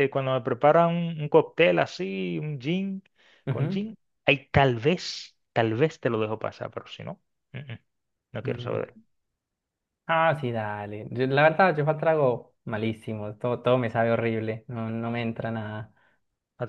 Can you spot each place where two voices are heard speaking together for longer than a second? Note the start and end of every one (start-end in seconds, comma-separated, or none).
none